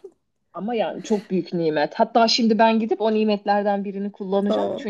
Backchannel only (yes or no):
yes